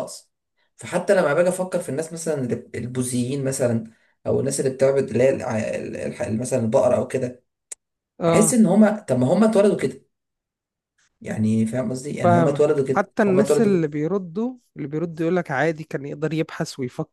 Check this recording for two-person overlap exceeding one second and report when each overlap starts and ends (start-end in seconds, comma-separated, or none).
12.2-13.9